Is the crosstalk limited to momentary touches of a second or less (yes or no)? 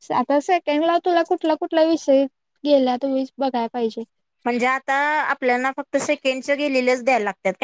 yes